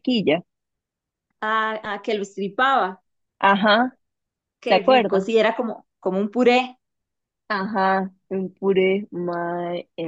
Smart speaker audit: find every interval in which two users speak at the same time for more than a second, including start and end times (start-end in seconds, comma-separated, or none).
none